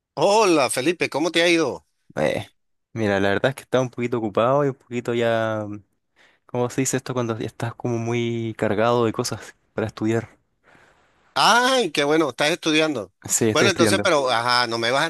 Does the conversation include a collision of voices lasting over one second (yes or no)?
no